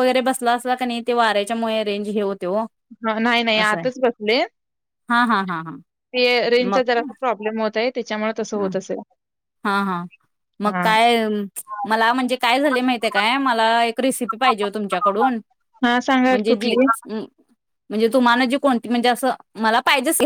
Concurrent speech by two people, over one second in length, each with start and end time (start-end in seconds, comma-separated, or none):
none